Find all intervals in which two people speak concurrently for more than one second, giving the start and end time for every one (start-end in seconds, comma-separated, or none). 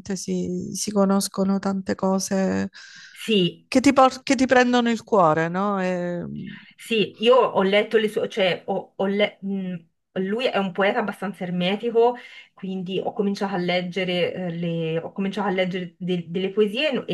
none